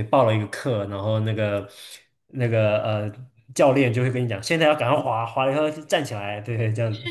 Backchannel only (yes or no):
no